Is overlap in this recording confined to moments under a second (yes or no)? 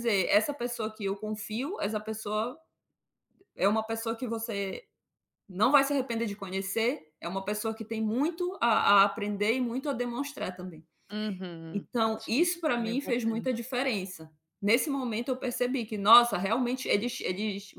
no